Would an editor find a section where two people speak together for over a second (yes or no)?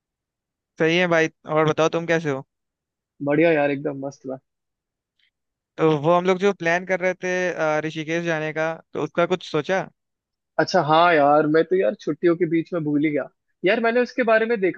no